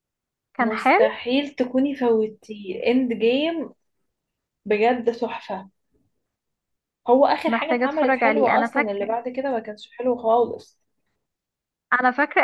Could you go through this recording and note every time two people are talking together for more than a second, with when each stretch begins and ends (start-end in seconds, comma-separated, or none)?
7.5-9.1